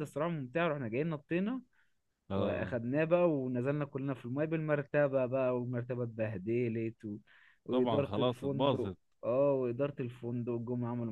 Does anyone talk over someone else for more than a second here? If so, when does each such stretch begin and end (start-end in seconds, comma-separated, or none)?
7.7-9.0